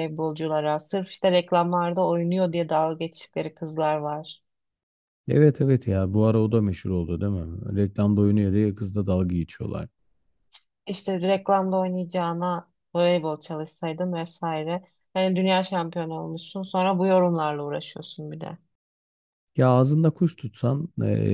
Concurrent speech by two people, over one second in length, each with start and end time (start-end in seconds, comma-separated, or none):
none